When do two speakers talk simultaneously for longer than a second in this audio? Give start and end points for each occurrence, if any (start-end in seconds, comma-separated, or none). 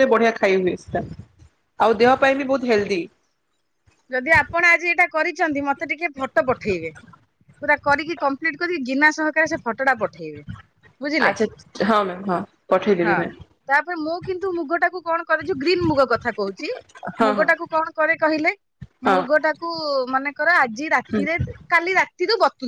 none